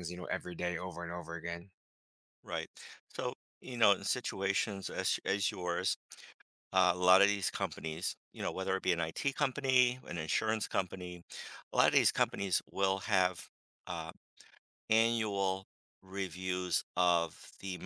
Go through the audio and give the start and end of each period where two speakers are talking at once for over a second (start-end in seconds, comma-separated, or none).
none